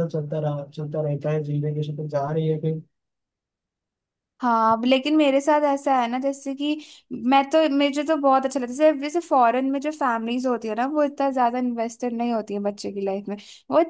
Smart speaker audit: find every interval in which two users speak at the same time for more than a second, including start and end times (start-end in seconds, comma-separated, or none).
none